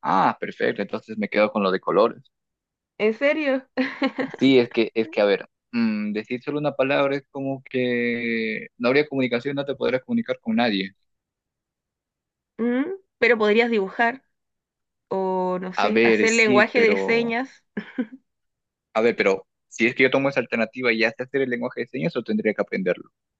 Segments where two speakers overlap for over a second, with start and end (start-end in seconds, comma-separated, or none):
15.8-17.4